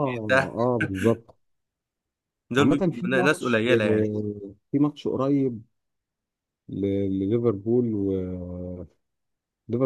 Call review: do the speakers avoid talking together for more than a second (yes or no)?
no